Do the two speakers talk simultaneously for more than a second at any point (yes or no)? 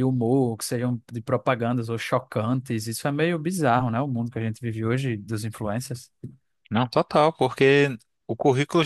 no